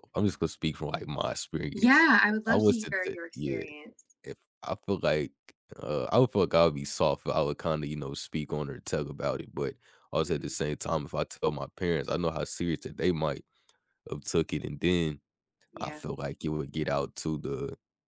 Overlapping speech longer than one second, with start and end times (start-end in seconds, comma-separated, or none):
1.7-3.6